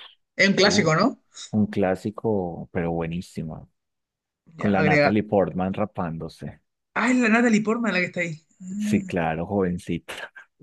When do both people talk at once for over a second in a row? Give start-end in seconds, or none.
none